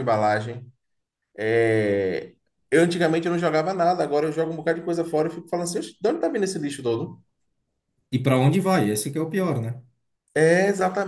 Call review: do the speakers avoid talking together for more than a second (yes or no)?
yes